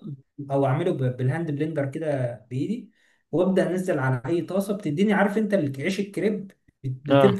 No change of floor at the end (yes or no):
yes